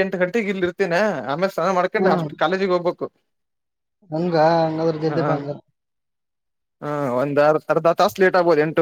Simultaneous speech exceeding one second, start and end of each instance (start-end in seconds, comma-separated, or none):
none